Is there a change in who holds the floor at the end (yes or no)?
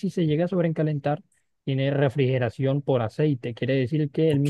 no